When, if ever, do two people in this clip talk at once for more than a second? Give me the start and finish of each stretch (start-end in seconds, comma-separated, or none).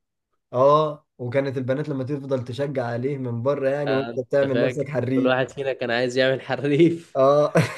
3.9-5.3